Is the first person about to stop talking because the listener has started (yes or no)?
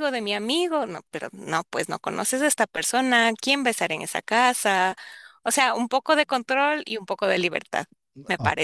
yes